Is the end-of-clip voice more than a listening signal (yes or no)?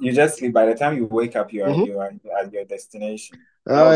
yes